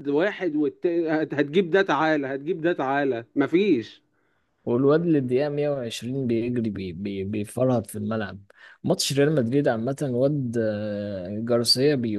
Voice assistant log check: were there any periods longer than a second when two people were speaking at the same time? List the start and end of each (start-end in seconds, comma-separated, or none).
none